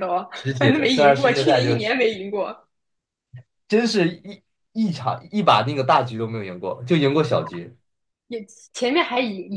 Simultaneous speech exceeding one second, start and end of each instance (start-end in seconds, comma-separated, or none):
0.6-1.9